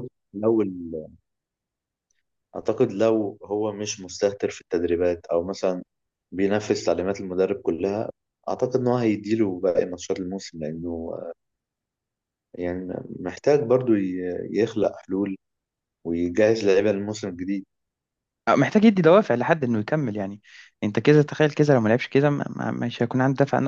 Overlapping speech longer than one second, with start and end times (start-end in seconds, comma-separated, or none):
none